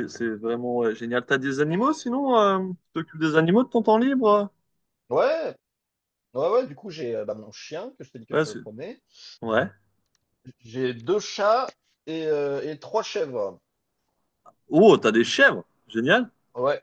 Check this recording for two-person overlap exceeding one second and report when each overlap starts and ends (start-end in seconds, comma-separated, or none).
none